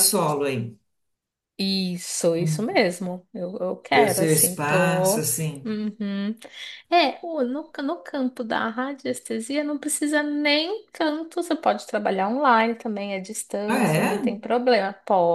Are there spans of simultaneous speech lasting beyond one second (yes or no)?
yes